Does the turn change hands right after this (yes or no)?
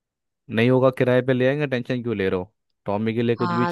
yes